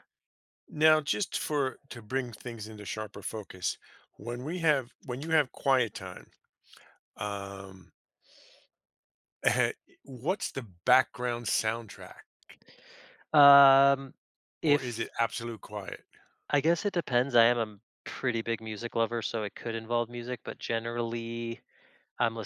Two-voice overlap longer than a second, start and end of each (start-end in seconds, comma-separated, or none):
none